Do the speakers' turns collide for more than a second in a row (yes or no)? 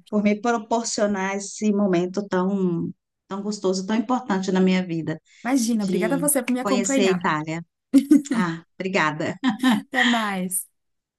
yes